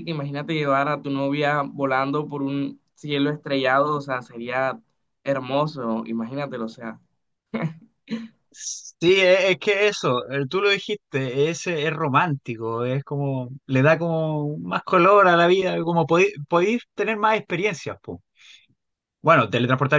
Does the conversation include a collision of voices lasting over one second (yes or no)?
no